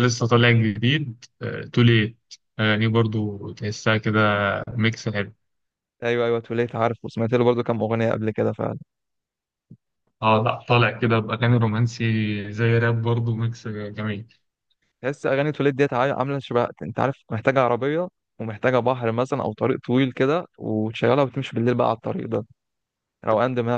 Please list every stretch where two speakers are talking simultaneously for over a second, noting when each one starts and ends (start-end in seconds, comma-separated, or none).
none